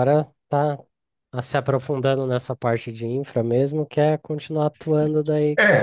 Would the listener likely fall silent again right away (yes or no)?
no